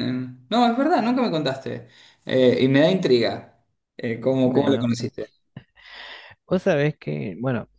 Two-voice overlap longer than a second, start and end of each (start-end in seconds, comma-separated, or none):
none